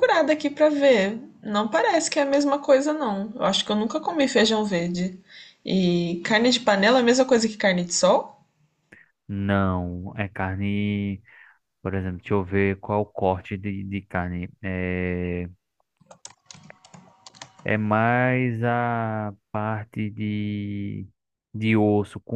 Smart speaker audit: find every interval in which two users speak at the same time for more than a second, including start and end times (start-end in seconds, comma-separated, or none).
none